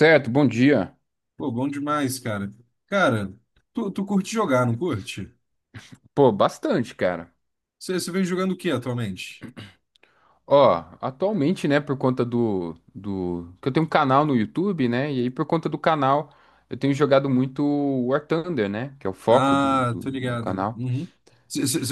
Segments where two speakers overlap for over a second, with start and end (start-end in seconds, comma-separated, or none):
19.3-20.8